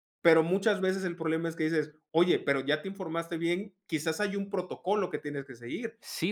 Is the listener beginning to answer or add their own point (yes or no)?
yes